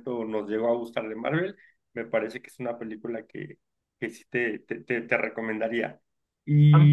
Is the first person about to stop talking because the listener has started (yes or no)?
yes